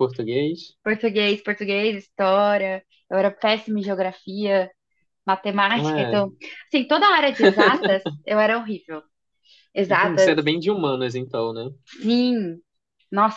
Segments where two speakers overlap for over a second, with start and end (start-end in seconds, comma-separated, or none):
none